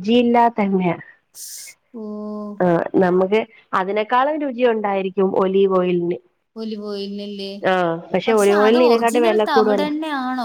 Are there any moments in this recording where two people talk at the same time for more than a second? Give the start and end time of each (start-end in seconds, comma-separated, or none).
8.4-9.9